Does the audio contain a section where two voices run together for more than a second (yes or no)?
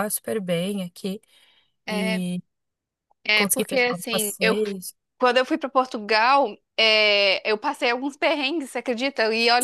yes